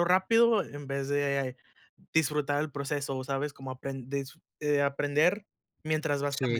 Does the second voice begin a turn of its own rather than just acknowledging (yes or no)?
yes